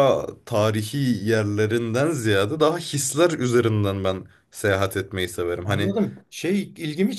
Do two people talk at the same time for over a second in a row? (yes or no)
no